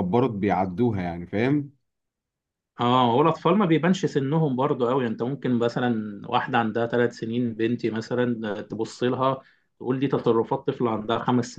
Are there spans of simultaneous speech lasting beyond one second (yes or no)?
no